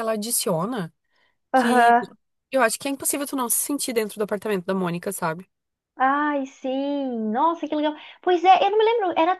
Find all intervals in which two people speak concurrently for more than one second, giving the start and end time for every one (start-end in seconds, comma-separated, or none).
none